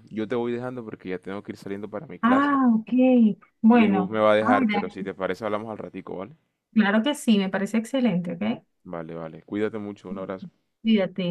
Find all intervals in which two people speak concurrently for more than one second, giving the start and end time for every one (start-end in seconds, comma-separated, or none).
3.7-5.1